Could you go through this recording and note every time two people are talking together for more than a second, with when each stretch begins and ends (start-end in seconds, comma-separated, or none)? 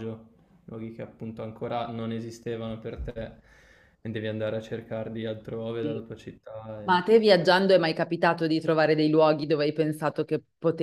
none